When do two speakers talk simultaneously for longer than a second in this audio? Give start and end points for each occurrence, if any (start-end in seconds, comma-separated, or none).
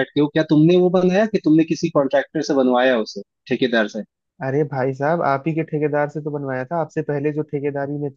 none